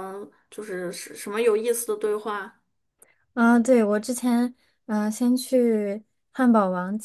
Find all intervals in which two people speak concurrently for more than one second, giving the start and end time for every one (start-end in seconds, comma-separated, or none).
none